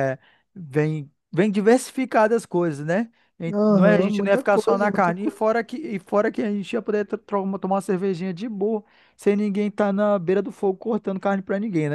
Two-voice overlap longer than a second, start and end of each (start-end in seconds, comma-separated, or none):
3.5-5.5